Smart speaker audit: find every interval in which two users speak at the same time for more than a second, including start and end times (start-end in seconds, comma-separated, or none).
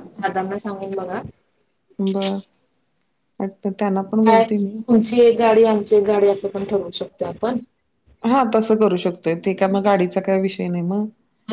none